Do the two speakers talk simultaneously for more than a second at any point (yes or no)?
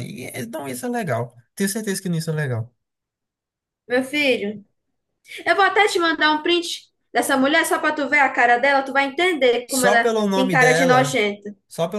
yes